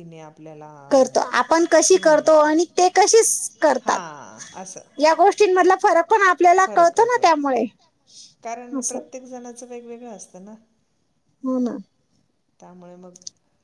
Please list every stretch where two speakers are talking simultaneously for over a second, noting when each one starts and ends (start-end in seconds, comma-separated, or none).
none